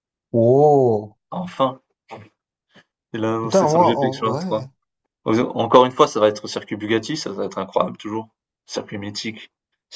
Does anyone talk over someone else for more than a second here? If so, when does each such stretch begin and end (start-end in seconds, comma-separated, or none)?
3.4-4.7